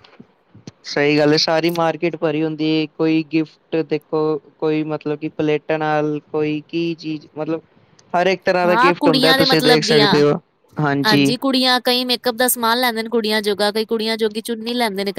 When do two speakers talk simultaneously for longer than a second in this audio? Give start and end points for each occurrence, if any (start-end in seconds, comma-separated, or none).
8.7-10.2